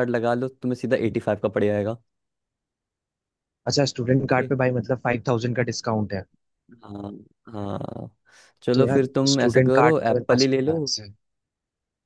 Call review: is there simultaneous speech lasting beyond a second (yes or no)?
yes